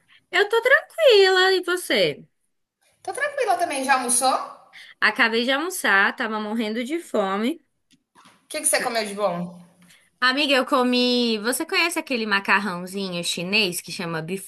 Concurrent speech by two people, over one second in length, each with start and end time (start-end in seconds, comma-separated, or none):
none